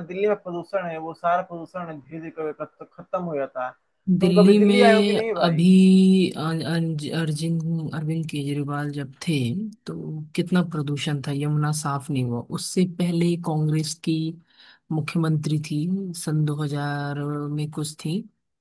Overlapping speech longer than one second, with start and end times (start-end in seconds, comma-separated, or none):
4.2-5.7